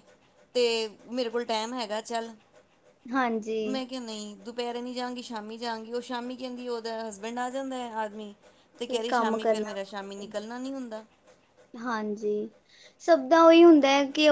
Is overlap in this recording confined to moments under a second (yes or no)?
no